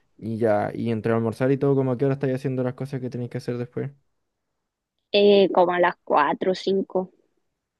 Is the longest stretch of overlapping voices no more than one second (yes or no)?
yes